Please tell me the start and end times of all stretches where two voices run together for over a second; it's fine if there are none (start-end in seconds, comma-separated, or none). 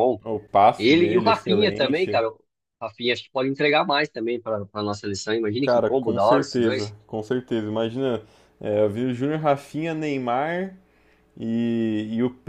0.8-2.3, 5.6-6.9